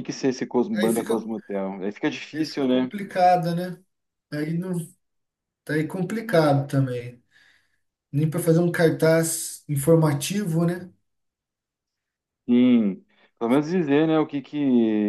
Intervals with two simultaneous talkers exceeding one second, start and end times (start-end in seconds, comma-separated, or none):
none